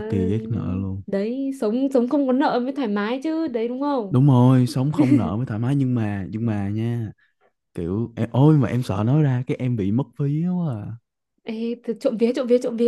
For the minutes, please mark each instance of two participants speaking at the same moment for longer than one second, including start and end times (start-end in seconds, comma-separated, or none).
none